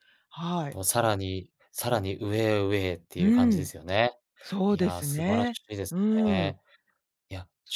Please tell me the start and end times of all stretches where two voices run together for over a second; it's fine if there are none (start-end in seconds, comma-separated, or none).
4.7-6.5